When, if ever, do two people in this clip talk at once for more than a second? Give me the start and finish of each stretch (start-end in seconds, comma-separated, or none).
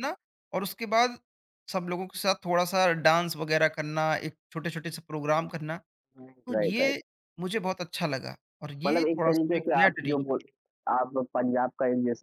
8.9-10.4